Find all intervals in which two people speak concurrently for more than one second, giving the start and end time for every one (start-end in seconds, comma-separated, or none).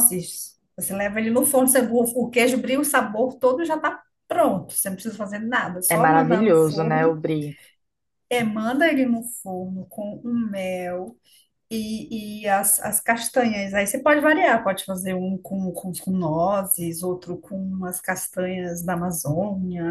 5.9-7.1